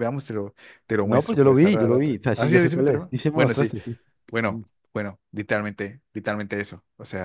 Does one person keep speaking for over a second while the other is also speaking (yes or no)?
yes